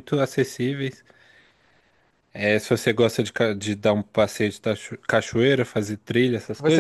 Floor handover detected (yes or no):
yes